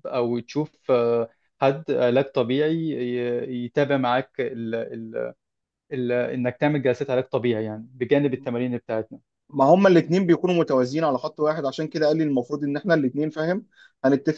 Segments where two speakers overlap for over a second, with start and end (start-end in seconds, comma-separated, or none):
none